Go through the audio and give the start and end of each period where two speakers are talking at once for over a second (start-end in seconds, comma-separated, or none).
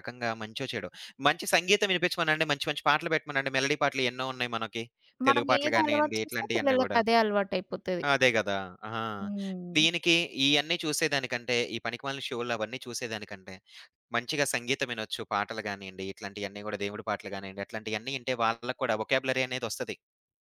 5.3-7.0